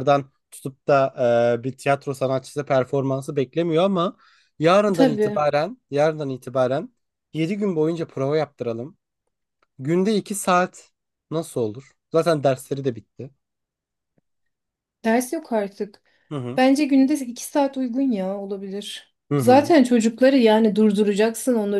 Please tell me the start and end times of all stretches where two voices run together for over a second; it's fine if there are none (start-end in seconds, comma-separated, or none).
none